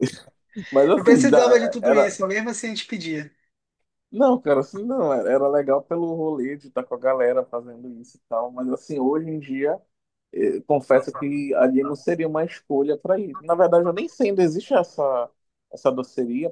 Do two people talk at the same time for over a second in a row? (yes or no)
yes